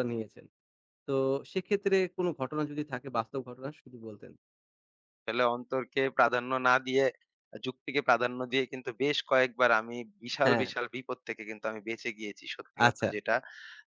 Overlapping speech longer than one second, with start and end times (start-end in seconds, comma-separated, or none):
none